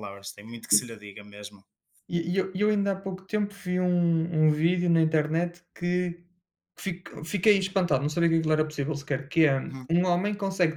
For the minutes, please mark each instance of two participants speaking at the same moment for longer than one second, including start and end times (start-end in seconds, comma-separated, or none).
none